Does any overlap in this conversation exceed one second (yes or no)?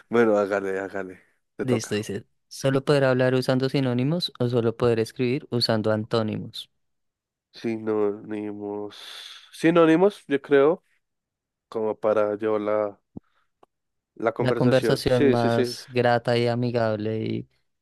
yes